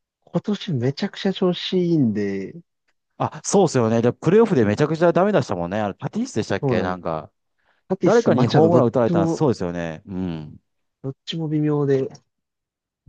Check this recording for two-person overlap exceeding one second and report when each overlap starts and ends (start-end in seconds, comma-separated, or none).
8.0-9.4